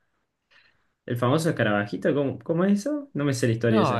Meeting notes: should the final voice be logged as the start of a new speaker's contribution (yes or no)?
yes